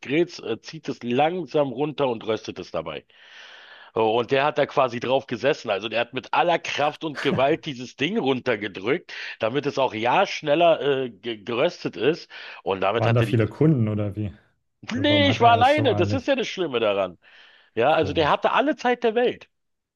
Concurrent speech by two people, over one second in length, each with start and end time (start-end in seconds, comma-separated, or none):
14.9-16.3